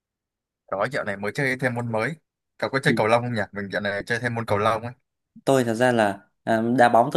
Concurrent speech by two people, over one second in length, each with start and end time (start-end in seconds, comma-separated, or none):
none